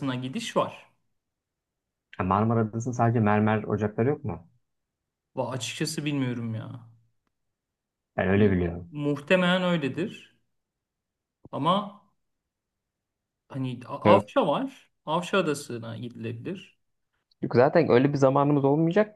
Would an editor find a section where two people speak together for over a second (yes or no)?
no